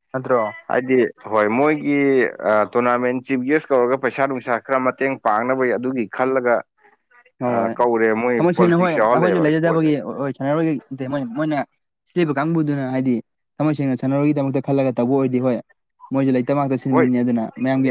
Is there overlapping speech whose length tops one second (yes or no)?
yes